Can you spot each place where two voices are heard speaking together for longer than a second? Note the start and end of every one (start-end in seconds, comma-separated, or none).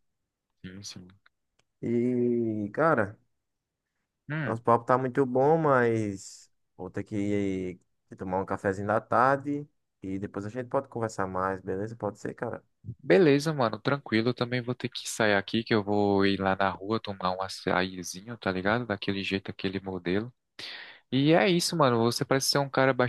none